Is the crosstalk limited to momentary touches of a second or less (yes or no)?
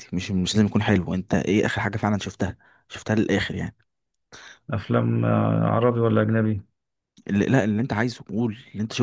yes